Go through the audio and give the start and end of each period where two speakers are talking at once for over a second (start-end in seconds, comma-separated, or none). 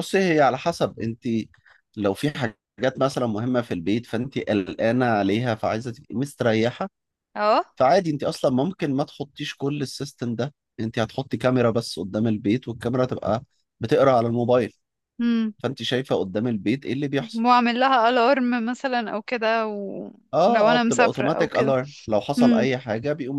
20.3-21.7